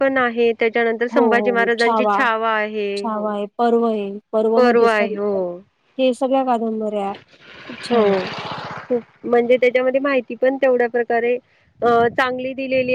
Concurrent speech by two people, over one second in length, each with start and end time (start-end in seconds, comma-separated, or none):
none